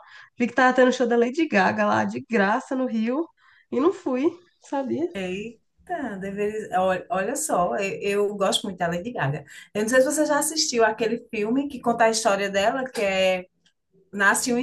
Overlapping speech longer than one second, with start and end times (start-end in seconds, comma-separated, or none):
none